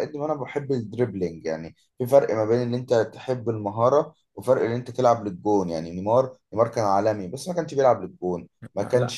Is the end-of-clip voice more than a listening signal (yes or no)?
no